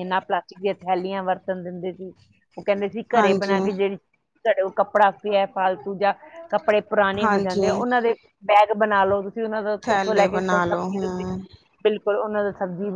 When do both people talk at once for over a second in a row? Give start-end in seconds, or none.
9.9-11.2